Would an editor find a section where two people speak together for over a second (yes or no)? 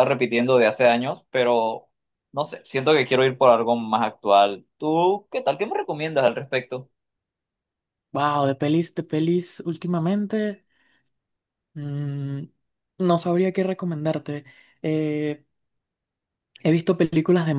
no